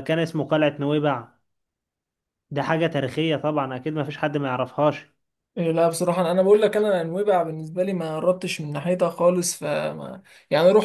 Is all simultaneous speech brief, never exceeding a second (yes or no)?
yes